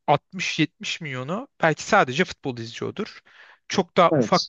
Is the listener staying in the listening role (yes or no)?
yes